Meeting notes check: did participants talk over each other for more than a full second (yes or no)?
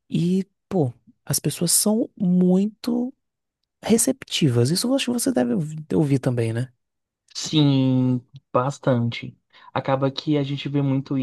no